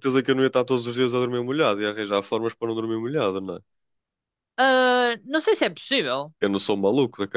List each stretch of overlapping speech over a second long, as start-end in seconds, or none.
none